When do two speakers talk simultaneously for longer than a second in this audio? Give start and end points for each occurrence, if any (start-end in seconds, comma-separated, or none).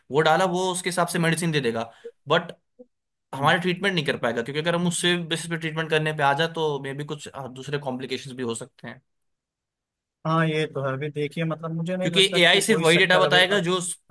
12.0-13.6